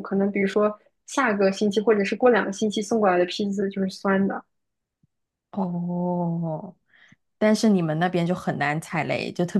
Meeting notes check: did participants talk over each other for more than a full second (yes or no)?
no